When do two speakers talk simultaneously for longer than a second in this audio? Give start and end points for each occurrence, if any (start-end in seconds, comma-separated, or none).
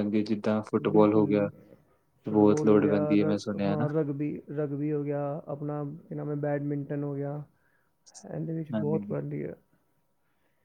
2.3-3.9